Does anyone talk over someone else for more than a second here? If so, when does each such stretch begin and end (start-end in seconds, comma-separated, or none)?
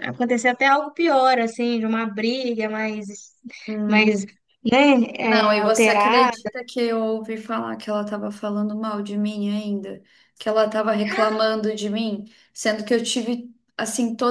5.3-6.5